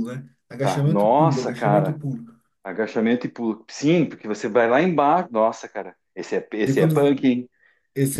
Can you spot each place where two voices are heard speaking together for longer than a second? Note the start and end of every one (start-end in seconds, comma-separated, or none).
0.6-2.0